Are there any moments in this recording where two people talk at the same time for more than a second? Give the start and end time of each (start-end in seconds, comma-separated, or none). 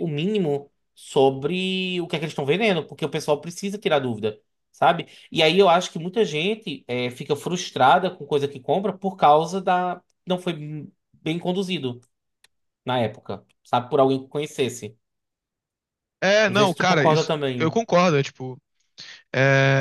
16.5-17.8